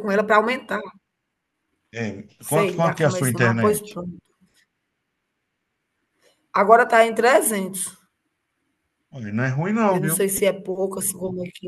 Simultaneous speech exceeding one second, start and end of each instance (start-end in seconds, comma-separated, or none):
2.5-3.8